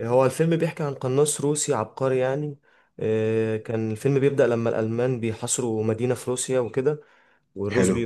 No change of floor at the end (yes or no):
yes